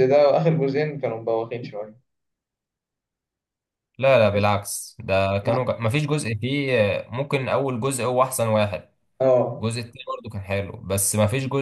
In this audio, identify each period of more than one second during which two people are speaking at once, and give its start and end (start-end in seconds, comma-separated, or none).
none